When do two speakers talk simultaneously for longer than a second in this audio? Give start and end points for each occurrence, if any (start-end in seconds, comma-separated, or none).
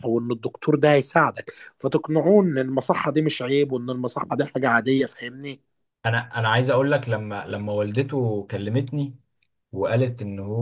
none